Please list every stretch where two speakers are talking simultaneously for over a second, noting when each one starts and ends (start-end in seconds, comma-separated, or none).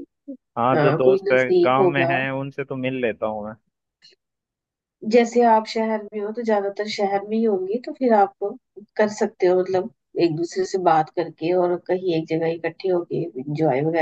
0.7-2.1